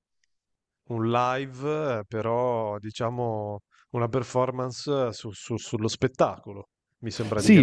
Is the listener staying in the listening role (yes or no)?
no